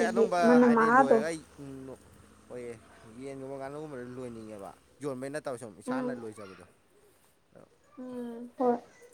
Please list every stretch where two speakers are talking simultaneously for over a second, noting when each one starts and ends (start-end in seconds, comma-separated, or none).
none